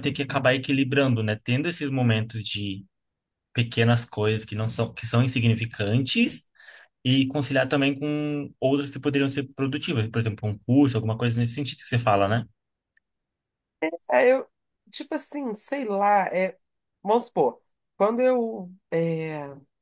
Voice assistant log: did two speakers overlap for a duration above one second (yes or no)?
no